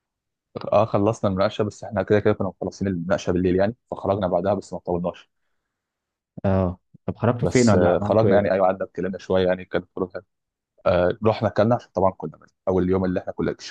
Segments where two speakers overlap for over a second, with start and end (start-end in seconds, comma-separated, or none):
7.4-8.7